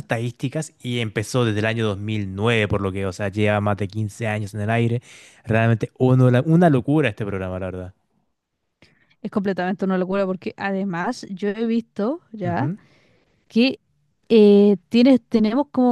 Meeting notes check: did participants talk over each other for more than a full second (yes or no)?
no